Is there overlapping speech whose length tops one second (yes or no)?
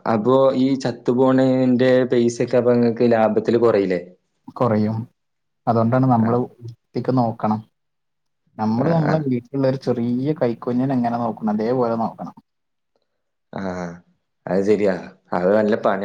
no